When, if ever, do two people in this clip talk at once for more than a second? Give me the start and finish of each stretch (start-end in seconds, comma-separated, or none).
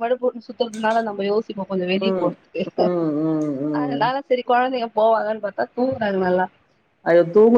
none